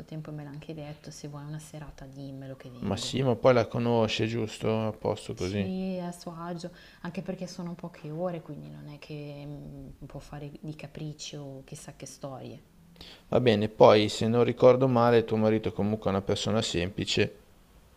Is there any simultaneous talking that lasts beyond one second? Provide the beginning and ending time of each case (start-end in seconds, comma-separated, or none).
none